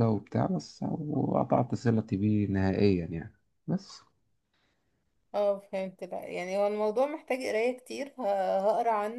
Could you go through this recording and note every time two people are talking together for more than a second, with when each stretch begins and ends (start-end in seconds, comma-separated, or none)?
none